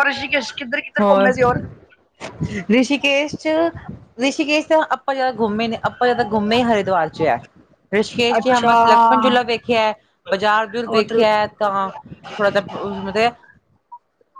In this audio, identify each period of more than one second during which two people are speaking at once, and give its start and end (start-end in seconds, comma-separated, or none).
none